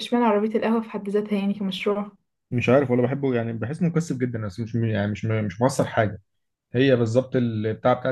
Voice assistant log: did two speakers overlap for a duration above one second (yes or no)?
no